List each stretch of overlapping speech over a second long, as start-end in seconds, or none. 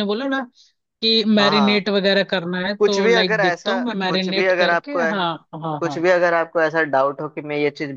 2.8-5.0